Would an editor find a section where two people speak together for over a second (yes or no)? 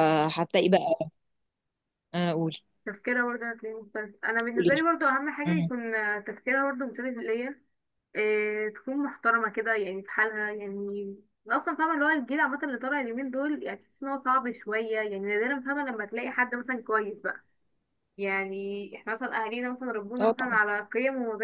no